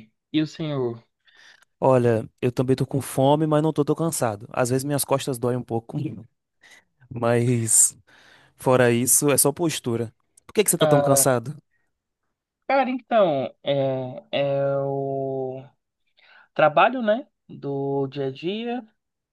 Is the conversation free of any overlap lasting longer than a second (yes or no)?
yes